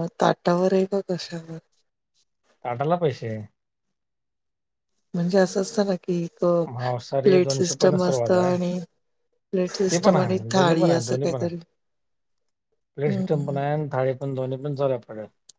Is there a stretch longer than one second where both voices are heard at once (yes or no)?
yes